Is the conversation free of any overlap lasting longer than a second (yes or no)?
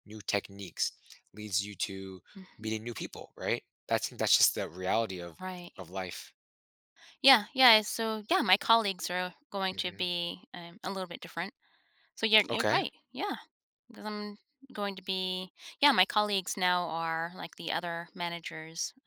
yes